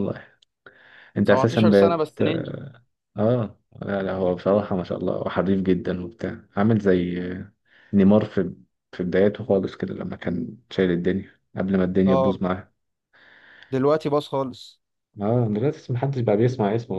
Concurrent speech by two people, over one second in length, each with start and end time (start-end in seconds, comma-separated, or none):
1.2-2.5